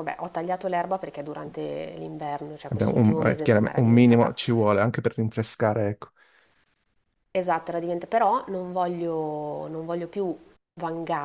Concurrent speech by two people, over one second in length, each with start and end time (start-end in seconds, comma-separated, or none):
2.7-4.3